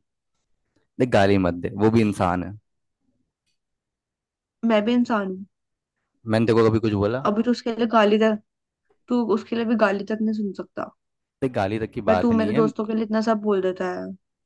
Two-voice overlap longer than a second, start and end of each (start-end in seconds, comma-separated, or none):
none